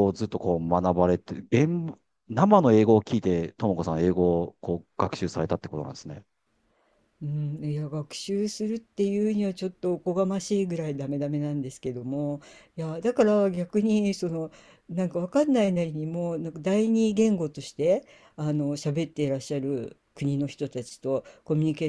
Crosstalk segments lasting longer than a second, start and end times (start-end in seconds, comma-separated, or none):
none